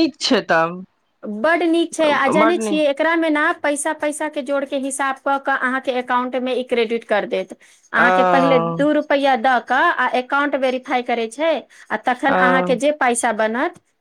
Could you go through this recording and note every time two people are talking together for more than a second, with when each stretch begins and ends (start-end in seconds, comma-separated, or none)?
none